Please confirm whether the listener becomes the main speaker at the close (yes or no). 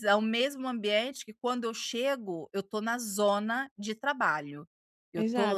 yes